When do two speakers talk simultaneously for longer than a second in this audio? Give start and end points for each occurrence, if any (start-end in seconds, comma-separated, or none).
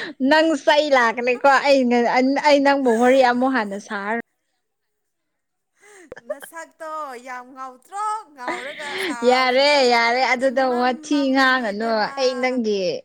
10.5-12.1